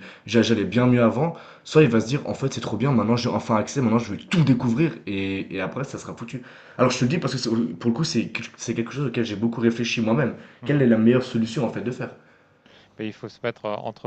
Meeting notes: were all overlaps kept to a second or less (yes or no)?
yes